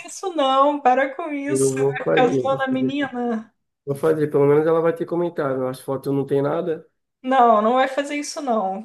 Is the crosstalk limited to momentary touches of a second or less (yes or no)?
no